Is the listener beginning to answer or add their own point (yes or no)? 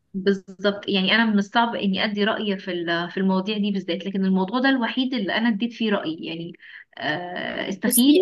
no